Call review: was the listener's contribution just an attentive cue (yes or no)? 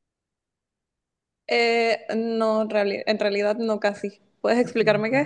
no